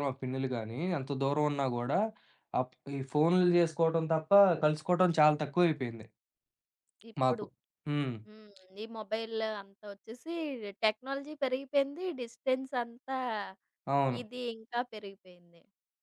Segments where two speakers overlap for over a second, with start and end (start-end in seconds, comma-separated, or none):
none